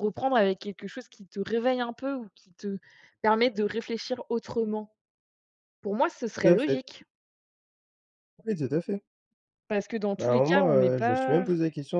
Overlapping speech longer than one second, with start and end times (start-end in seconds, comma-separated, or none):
10.2-11.4